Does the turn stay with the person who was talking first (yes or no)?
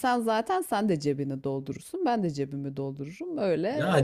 no